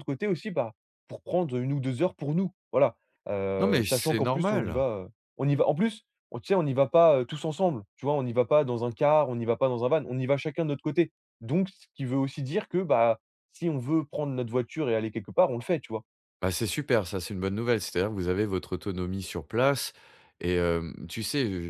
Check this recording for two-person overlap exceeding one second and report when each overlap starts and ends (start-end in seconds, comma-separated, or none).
3.6-4.8